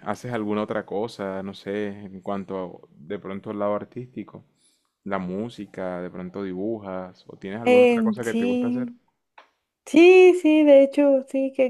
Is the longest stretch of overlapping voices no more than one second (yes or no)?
no